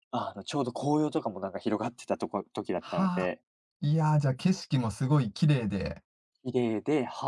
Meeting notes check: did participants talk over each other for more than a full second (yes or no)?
no